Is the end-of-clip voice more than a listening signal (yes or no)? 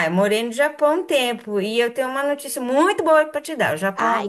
no